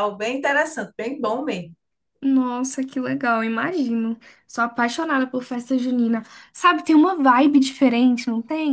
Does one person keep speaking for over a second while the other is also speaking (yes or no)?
no